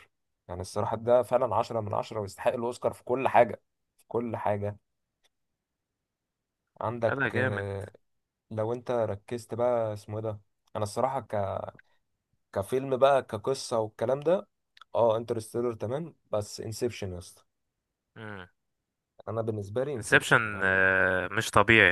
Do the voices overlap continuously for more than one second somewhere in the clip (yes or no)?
no